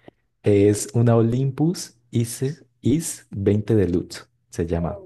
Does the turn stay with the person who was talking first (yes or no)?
no